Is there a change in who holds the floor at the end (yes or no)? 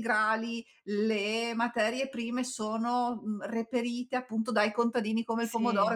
no